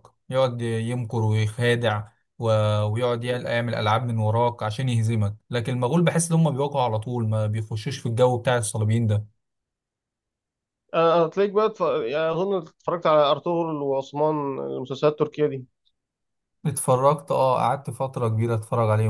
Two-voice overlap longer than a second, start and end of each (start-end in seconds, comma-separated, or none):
none